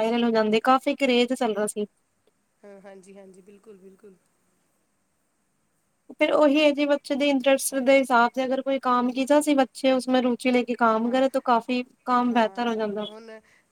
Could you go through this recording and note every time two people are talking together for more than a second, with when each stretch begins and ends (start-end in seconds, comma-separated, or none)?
none